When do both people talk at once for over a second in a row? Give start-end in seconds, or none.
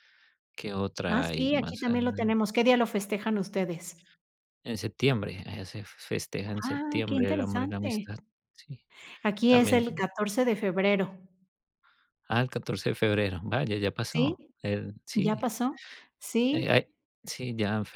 1.1-2.4, 6.6-8.1